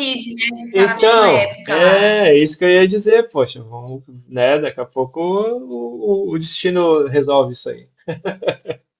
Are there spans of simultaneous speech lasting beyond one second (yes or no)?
yes